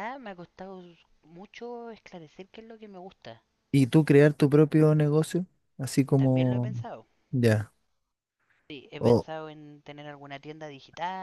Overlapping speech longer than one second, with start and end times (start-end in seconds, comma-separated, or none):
none